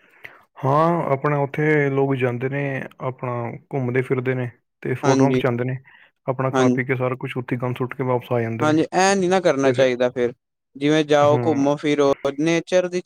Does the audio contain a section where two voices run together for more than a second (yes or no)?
no